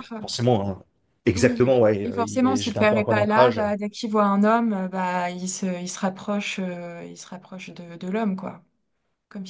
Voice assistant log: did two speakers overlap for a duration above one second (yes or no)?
yes